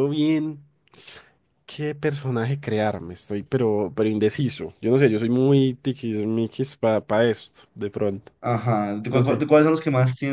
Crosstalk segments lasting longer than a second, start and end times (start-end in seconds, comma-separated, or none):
none